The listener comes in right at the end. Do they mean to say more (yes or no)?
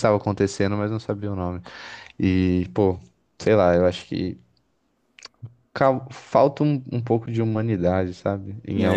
yes